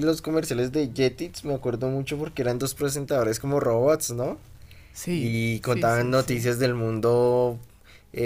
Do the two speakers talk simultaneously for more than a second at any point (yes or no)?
yes